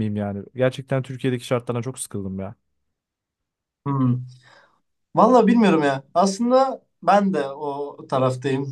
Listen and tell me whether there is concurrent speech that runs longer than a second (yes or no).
no